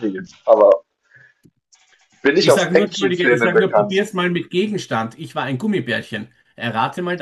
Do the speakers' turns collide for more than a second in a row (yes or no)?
yes